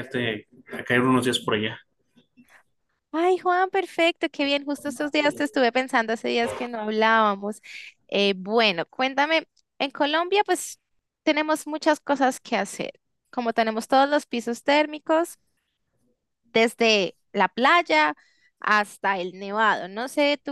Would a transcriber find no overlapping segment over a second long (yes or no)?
yes